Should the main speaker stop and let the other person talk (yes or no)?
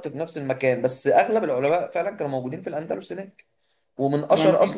no